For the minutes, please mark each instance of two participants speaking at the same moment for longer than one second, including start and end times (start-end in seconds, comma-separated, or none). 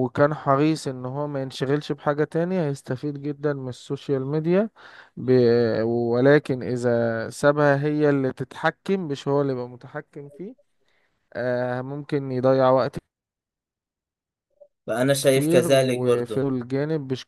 15.2-16.5